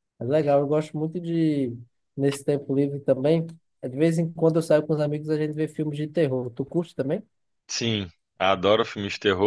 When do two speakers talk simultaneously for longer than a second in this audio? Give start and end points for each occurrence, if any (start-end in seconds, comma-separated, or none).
none